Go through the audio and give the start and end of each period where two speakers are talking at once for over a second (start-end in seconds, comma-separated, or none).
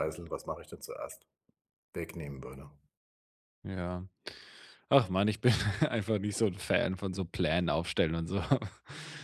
none